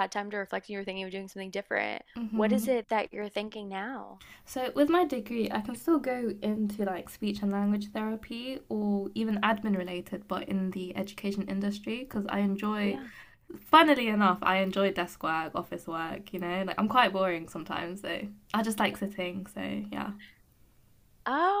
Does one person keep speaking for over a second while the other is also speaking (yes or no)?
no